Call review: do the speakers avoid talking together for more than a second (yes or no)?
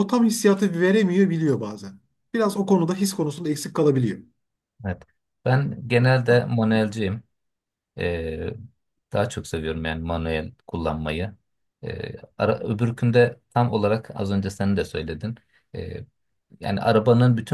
yes